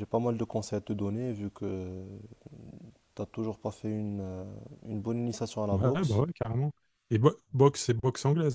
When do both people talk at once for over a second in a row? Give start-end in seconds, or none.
none